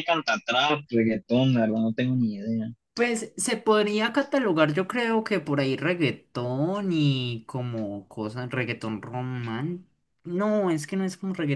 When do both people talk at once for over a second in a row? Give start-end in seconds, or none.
none